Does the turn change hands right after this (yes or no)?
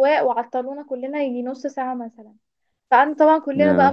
no